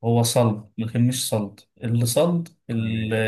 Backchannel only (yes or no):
yes